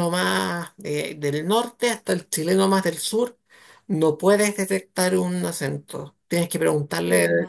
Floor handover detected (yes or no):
no